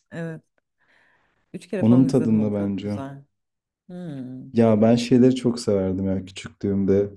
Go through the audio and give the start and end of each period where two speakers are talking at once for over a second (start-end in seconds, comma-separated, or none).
1.8-3.0